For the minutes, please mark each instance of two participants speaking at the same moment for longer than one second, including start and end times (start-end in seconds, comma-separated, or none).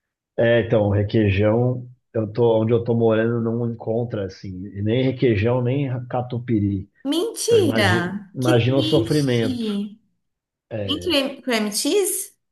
7.5-9.5